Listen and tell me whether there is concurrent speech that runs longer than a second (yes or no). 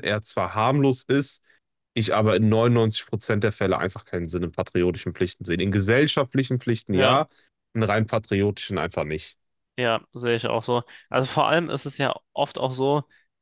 no